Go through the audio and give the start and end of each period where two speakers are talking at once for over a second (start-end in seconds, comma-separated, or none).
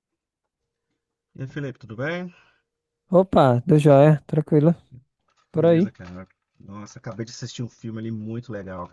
none